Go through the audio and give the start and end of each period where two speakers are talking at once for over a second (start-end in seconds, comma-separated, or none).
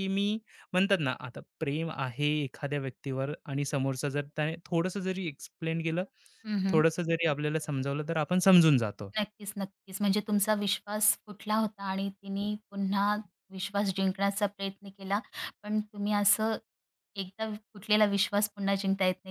none